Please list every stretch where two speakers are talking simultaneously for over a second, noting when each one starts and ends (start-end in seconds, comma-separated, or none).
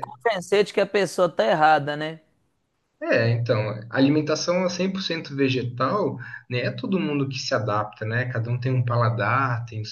none